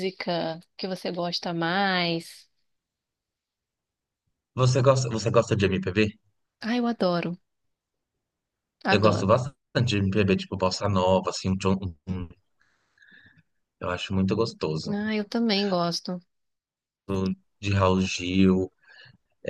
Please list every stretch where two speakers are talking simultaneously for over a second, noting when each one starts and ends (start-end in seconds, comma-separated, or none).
none